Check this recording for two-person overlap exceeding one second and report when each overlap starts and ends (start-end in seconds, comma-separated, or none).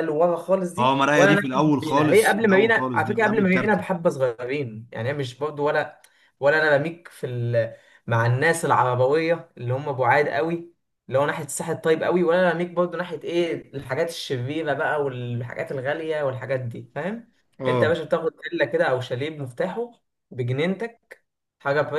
0.8-3.8